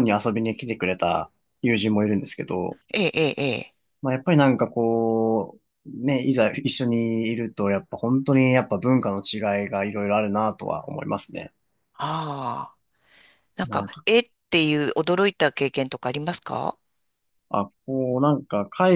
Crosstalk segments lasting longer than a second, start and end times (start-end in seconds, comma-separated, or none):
none